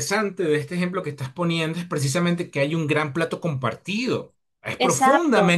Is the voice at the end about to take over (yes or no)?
yes